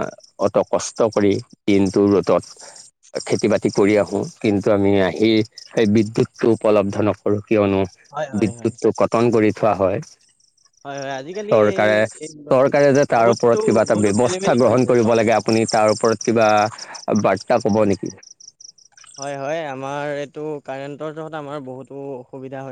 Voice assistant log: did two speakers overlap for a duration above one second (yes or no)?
yes